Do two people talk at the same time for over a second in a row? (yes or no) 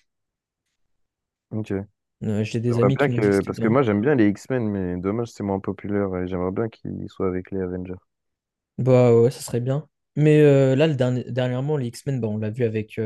yes